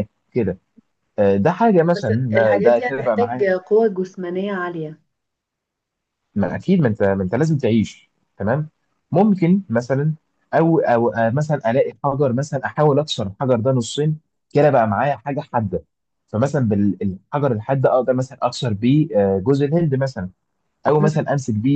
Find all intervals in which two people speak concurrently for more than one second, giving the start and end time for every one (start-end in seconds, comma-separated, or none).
1.9-3.5